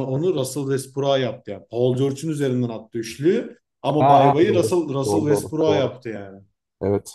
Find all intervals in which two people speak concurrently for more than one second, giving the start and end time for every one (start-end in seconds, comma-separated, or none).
4.0-6.0